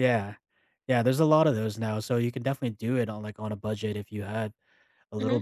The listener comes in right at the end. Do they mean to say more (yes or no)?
yes